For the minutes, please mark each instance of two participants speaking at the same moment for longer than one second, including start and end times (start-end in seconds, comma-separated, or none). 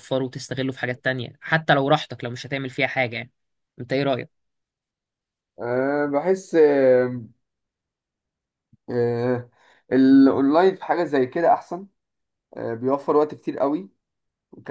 none